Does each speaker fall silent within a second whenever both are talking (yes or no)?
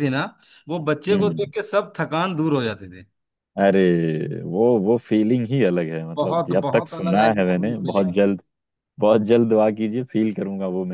no